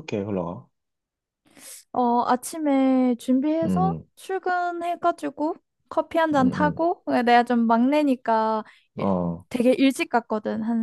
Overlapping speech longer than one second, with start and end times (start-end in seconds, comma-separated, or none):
none